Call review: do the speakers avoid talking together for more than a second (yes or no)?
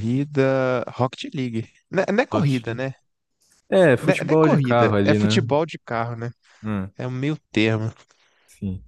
no